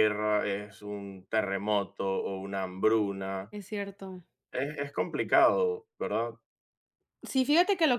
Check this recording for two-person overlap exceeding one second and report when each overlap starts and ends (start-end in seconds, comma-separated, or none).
none